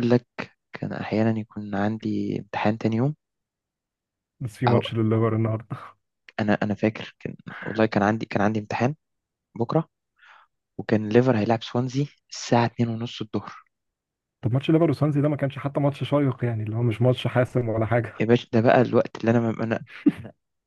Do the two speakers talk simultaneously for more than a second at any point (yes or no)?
no